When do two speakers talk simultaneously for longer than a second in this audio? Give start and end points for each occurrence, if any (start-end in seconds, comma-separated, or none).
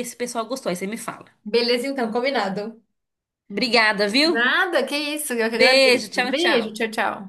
5.5-6.7